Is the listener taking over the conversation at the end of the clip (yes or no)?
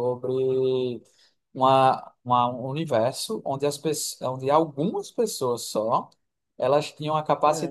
no